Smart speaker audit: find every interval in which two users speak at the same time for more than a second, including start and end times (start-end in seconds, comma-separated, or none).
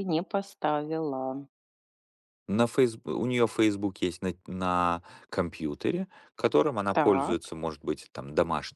none